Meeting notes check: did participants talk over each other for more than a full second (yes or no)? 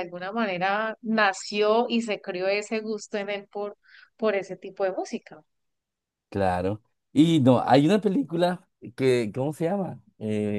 no